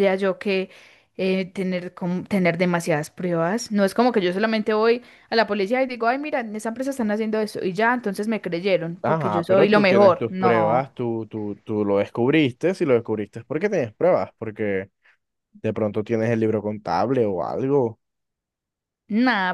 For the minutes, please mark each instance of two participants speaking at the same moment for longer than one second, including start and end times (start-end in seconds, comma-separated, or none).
9.0-10.9